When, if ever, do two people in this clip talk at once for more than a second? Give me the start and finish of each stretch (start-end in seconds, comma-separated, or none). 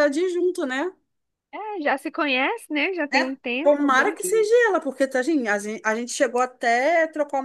3.1-4.5